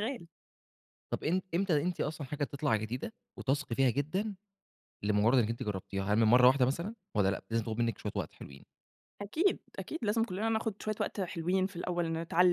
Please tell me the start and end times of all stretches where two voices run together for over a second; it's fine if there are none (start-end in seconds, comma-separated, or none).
none